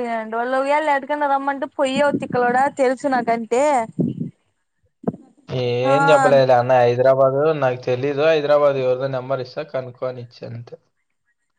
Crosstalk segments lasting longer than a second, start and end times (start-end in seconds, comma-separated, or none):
none